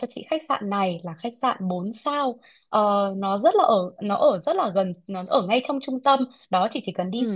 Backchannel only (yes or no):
yes